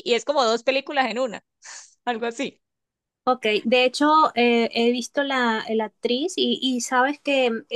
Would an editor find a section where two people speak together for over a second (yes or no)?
no